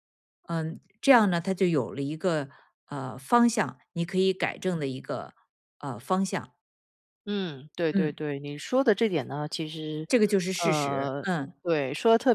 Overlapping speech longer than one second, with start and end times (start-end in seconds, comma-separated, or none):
none